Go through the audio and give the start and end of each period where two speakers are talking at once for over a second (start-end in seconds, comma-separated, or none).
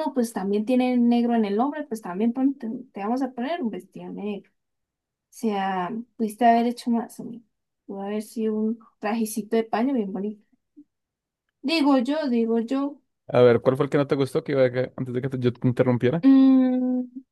none